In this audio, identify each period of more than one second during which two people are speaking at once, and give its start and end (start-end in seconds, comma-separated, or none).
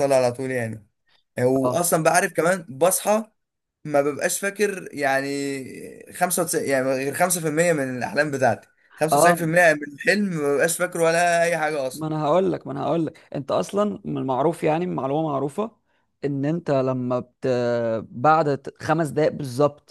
none